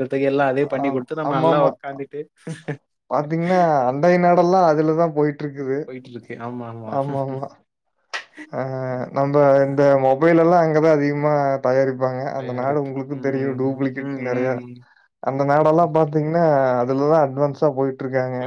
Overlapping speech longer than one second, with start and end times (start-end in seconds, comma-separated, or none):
12.4-14.5